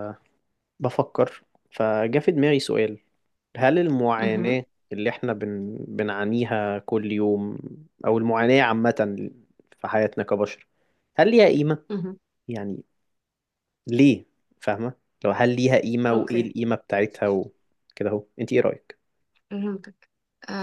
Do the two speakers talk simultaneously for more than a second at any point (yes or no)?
no